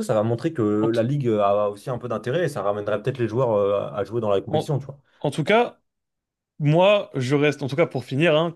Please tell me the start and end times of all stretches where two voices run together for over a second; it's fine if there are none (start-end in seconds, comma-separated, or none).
none